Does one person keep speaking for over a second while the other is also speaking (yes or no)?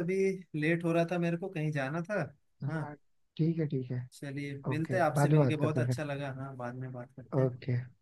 yes